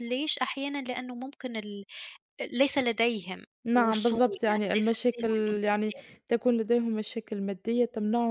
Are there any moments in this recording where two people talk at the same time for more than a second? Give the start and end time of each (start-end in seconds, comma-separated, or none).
3.6-5.9